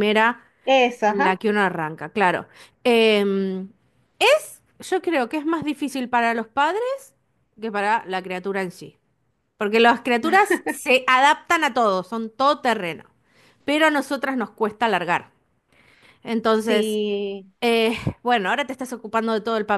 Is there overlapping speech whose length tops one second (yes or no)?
no